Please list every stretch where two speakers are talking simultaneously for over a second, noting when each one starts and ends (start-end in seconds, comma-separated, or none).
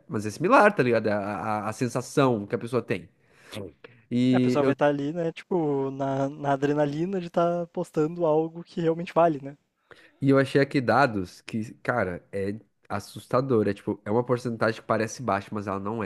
none